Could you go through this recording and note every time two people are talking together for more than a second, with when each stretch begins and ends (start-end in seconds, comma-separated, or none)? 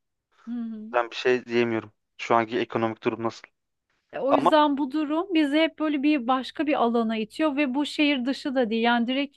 none